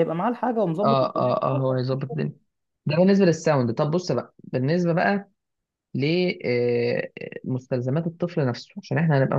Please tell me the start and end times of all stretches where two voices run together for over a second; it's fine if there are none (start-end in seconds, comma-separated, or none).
0.8-2.2